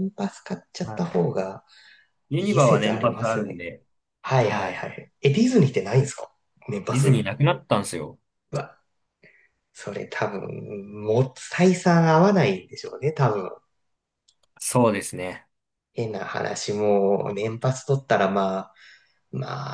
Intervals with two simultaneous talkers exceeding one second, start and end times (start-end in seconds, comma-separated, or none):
2.4-3.6